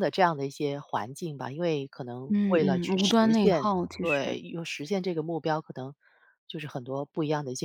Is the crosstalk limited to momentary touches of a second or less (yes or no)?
no